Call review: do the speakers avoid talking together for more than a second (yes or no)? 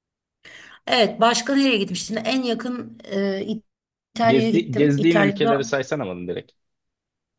no